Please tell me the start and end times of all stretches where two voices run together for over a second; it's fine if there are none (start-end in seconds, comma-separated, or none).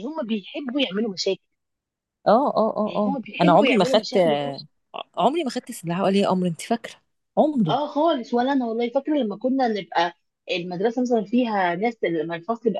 2.9-4.2